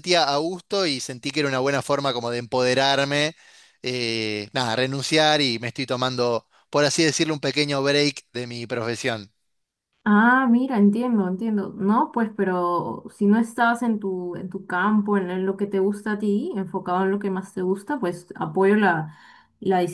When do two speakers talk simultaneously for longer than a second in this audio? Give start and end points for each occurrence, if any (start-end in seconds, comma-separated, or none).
none